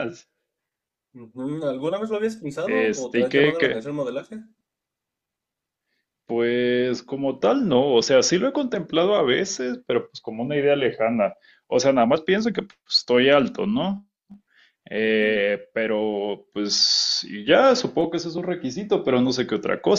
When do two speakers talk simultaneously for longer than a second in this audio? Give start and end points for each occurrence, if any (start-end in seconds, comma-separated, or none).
2.6-3.8